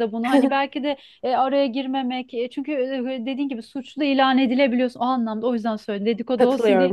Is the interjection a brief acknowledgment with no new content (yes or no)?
no